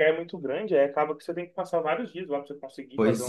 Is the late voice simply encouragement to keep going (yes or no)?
no